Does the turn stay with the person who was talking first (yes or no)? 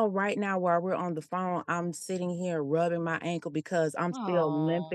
yes